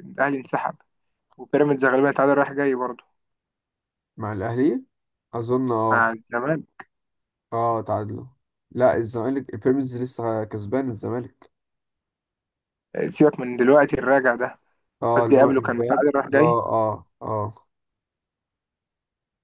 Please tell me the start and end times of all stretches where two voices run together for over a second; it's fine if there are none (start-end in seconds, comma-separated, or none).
15.2-16.6